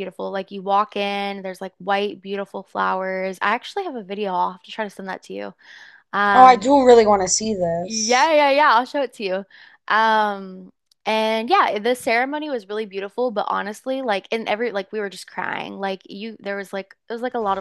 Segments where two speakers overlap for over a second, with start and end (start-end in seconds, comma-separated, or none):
none